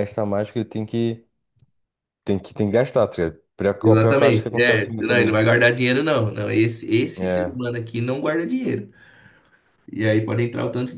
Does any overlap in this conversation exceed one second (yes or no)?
yes